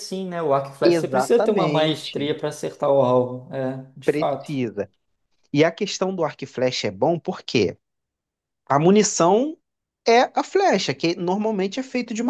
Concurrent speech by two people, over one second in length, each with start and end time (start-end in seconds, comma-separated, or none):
0.8-2.3